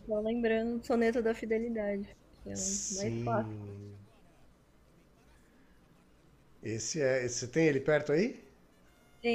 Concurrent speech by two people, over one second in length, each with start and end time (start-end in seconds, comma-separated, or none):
2.5-3.7